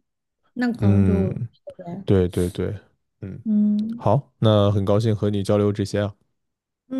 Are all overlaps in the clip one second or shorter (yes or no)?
yes